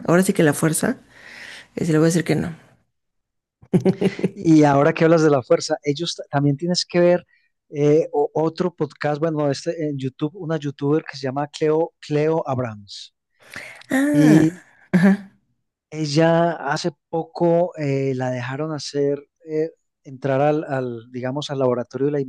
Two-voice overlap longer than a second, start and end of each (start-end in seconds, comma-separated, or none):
none